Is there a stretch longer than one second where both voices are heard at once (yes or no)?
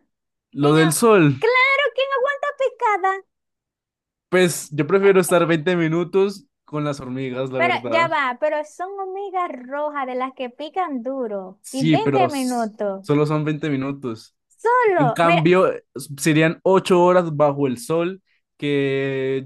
yes